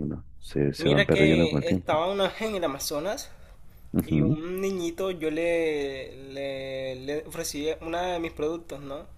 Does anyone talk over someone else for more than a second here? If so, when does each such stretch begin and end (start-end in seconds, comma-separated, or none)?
0.8-2.1